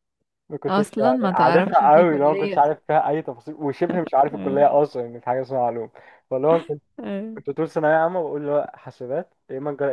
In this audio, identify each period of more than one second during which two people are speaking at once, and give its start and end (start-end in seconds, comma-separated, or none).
0.7-2.6